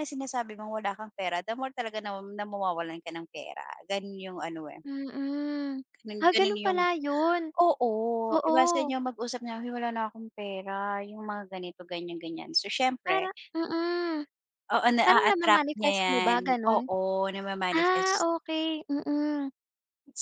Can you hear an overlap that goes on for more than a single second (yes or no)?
yes